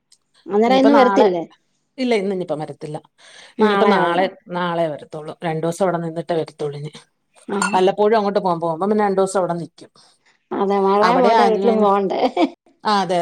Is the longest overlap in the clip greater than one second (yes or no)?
no